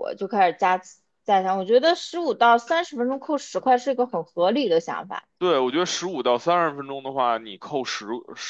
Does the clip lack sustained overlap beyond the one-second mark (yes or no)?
yes